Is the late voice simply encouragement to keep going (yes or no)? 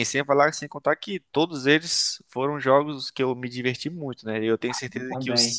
yes